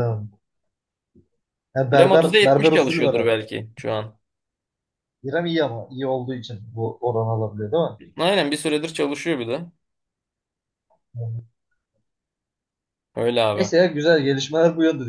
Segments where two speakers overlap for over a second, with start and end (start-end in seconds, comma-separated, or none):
1.9-3.3